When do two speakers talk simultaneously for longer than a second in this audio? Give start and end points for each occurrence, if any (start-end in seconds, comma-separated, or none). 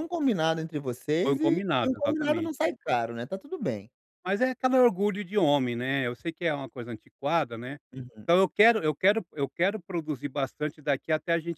1.2-2.5